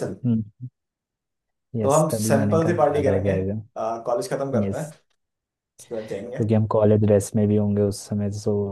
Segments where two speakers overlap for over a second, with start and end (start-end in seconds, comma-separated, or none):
1.8-3.4